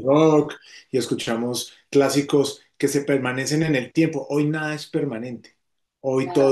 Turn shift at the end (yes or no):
no